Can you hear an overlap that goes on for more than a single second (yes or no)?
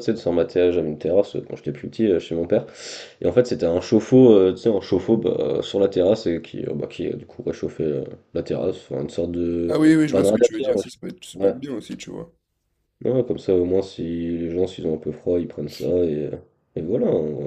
yes